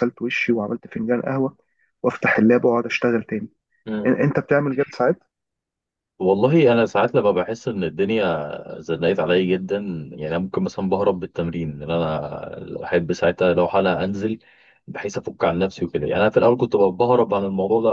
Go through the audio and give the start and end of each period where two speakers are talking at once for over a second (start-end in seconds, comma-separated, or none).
none